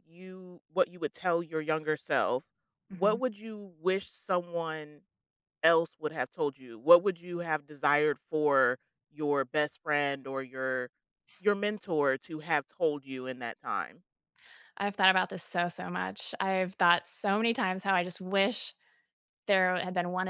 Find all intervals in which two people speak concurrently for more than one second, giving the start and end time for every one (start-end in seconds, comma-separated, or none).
none